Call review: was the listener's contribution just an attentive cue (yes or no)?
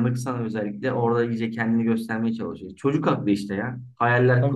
yes